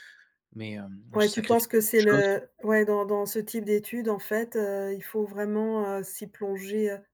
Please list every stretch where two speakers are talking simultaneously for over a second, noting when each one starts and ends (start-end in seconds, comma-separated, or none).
1.1-2.3